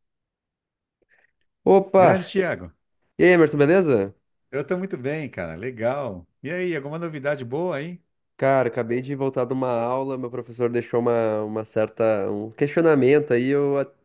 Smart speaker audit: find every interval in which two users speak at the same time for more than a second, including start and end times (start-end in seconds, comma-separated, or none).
none